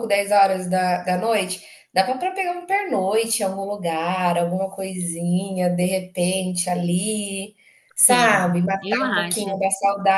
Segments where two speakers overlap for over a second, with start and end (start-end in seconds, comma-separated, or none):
8.1-9.6